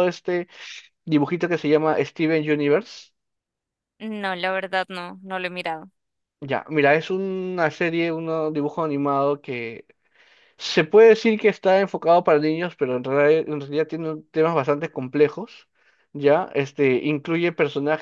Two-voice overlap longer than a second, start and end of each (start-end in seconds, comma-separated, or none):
none